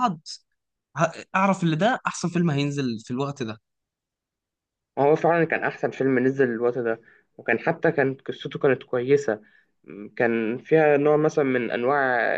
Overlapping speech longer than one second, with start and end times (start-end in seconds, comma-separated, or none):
none